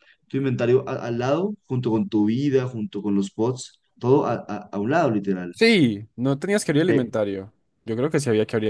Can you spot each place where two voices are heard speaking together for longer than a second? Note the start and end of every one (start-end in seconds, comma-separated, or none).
none